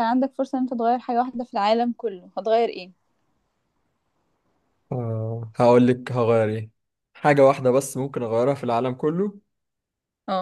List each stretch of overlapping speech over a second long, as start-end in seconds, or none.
none